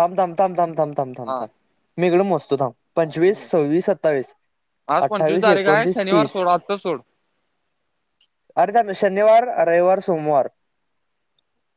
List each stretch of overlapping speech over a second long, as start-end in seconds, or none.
5.0-6.4